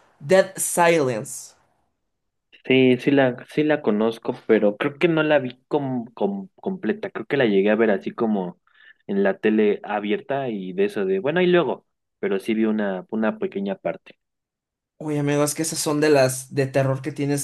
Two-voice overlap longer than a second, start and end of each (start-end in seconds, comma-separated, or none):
none